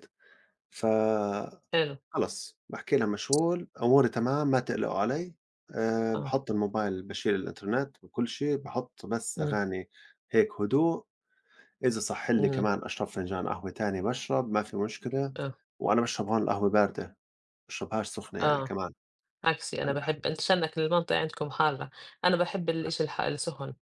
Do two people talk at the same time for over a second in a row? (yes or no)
no